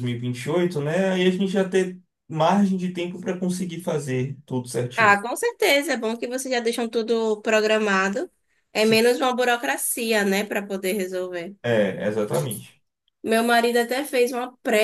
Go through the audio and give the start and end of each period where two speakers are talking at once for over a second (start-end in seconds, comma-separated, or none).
none